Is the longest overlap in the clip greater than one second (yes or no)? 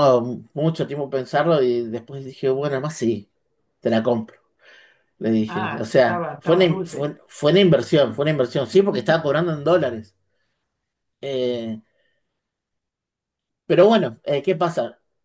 yes